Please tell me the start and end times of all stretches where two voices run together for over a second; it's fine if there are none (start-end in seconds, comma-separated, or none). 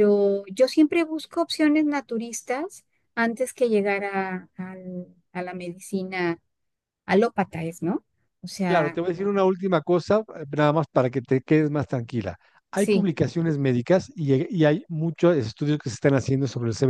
none